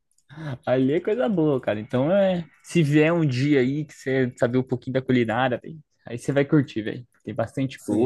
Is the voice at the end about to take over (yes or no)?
yes